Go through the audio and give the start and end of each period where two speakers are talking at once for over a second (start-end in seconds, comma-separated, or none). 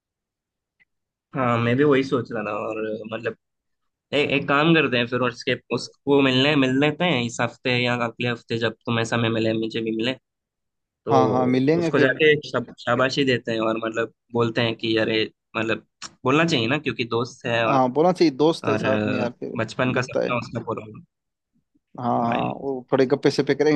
18.6-20.4